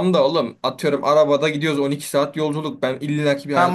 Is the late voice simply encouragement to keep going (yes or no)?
no